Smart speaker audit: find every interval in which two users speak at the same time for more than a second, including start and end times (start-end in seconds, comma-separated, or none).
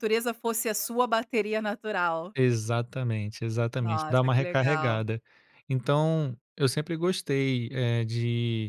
3.8-5.0